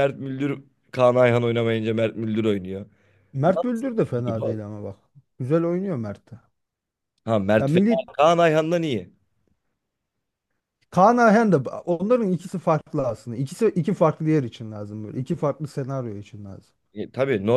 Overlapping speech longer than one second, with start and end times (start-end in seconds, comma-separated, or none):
none